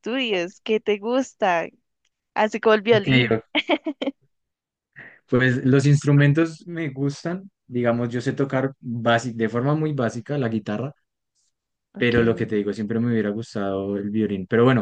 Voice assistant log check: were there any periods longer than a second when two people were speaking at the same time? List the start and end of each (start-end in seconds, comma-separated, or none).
none